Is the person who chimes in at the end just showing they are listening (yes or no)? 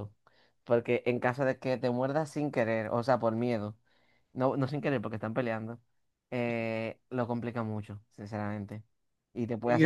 no